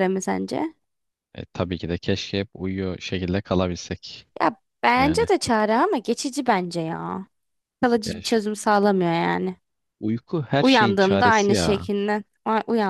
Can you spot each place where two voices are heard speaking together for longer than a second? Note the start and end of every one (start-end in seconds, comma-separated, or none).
10.6-11.9